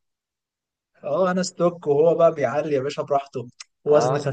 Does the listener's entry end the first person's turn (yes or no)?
no